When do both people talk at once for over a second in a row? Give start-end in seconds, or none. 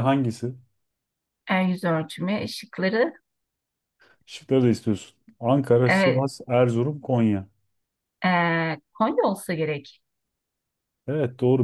none